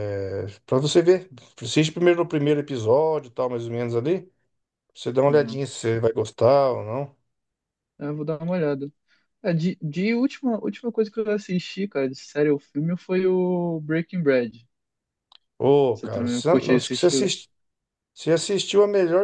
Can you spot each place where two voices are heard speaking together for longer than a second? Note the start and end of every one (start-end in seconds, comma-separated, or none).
15.9-17.3